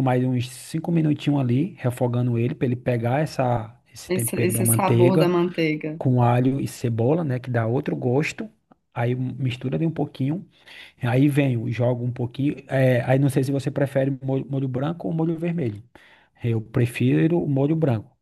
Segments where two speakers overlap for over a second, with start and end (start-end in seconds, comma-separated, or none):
4.1-5.3